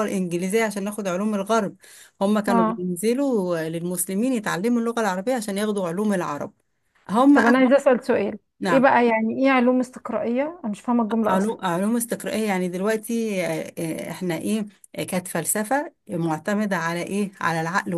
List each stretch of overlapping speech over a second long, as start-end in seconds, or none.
none